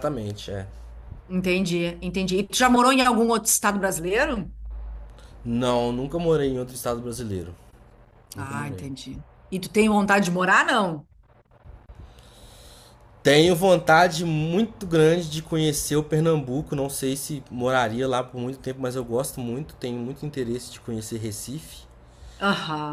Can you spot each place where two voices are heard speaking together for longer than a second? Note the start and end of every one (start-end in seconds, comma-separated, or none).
none